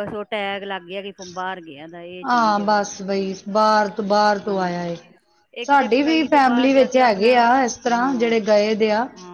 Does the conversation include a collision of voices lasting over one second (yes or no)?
yes